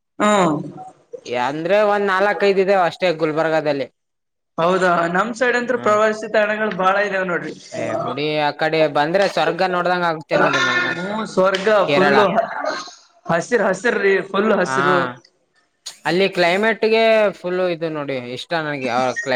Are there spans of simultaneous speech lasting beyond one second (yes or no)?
no